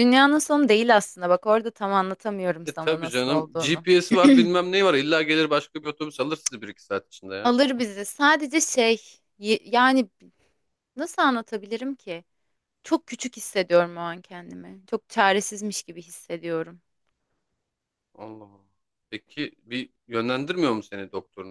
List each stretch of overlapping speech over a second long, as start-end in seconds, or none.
2.6-3.9